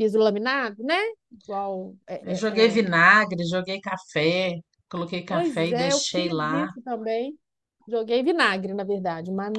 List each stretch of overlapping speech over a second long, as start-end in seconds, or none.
5.3-6.7